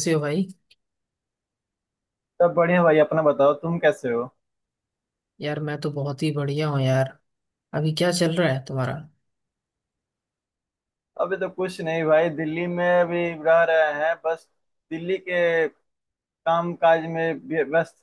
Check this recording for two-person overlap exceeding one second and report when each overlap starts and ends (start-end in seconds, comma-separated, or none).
none